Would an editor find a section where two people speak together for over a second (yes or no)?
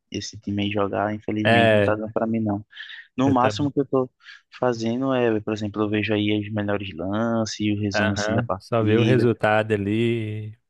yes